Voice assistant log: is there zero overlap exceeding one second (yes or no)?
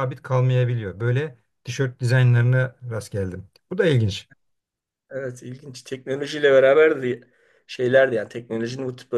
yes